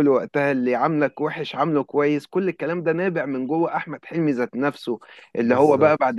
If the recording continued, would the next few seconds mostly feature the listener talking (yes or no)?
no